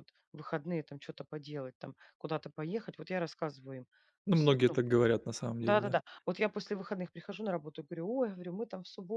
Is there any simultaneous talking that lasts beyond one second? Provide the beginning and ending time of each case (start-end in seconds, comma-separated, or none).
none